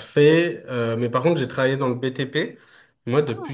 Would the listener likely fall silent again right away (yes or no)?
yes